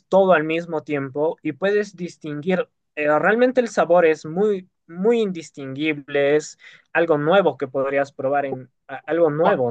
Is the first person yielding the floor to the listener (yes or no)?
yes